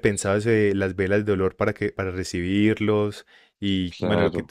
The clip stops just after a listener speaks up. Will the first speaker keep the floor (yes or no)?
yes